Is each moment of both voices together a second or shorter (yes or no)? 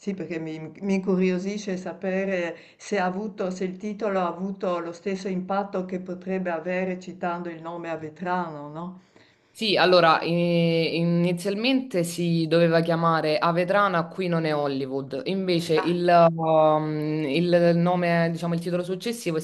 yes